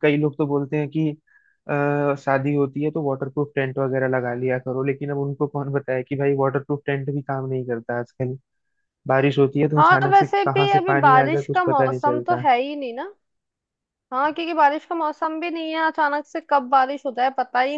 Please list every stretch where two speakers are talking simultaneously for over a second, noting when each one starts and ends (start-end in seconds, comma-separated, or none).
9.8-12.4